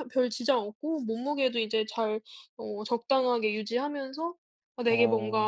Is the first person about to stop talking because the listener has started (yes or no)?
no